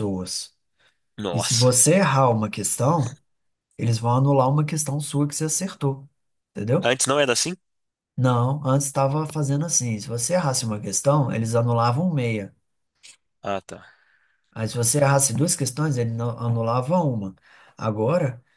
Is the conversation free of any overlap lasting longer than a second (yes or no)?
yes